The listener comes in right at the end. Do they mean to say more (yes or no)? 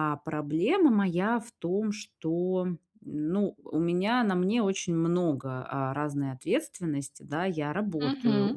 no